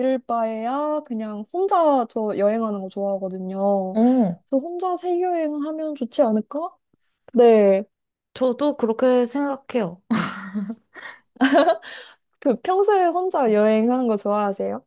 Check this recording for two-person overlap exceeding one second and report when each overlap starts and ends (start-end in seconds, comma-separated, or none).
none